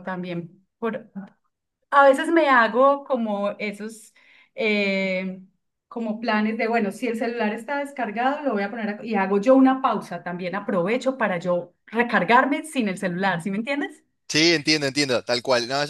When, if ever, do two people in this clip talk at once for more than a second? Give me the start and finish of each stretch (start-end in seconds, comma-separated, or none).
none